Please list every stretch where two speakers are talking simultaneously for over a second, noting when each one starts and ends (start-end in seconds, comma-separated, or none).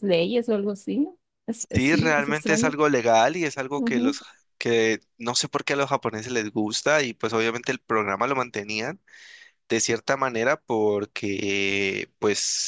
1.6-2.8